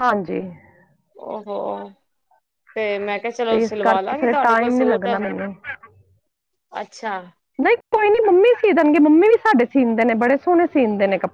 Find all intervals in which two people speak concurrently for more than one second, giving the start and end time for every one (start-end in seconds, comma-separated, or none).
3.5-5.1